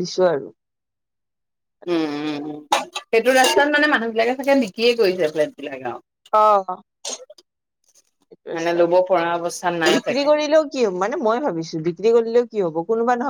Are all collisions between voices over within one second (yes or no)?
no